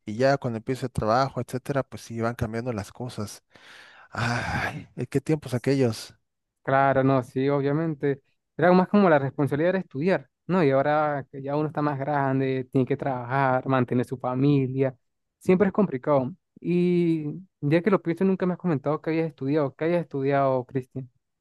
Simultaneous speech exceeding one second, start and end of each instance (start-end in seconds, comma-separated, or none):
none